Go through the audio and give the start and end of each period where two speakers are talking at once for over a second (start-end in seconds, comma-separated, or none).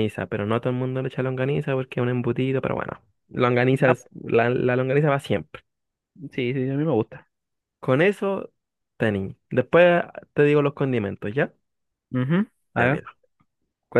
none